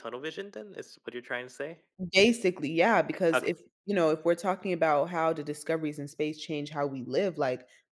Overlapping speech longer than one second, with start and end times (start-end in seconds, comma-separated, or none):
none